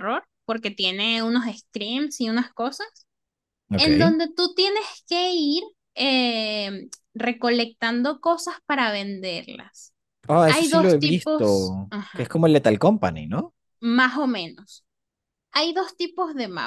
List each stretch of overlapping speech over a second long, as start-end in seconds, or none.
10.5-12.3